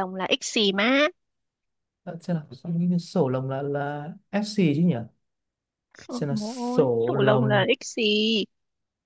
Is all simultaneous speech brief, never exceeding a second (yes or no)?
no